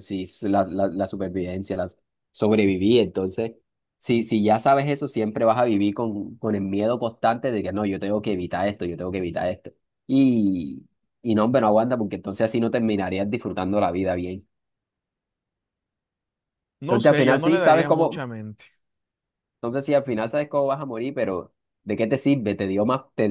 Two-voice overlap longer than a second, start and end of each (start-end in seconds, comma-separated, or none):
16.9-18.2